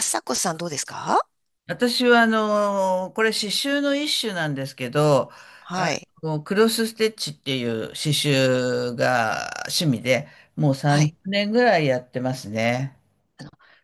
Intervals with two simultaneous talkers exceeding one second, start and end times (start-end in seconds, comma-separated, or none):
none